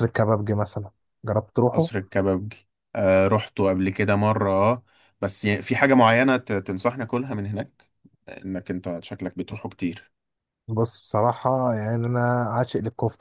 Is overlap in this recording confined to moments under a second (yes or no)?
yes